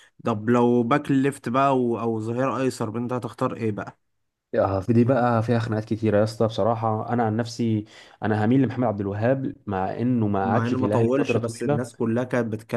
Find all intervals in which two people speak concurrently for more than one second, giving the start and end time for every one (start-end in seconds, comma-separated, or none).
10.4-11.8